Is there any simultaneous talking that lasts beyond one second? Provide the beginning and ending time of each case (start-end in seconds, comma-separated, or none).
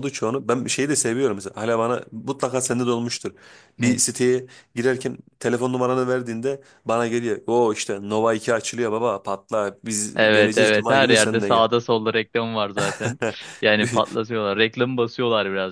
10.2-11.7